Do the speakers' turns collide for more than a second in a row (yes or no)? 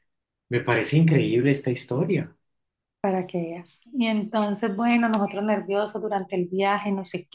no